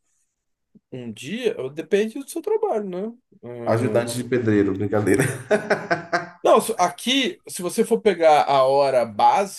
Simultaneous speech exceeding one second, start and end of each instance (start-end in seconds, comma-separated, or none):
none